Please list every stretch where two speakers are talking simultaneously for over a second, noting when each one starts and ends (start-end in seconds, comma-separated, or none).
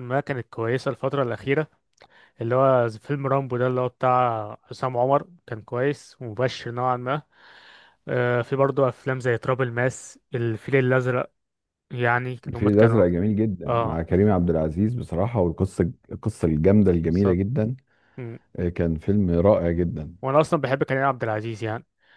none